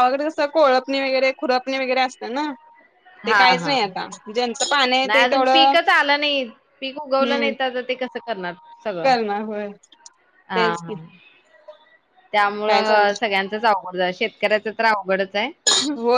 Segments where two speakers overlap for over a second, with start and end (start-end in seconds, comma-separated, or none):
none